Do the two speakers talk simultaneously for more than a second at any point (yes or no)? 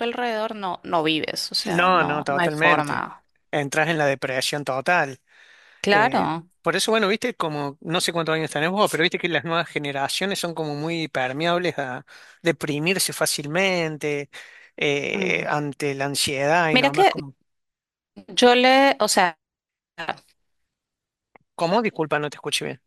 yes